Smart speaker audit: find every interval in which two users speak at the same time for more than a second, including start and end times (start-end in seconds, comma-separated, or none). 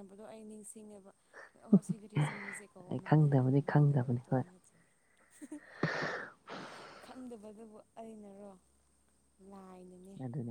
2.9-4.4